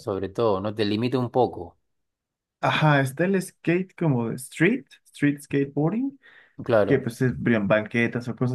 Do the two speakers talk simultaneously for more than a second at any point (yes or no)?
no